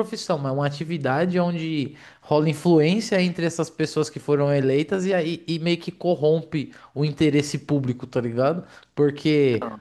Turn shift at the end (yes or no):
no